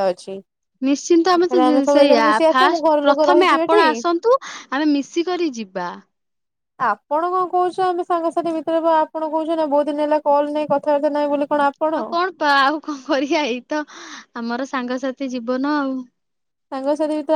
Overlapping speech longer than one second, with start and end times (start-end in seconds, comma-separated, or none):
1.3-3.8